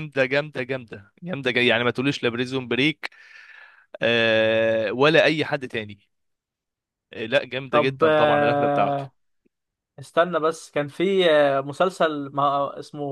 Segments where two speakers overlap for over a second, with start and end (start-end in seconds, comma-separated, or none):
7.7-9.0